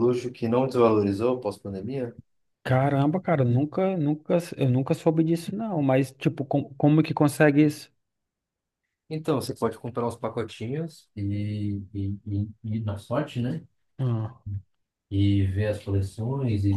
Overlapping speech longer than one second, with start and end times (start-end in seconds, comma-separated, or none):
none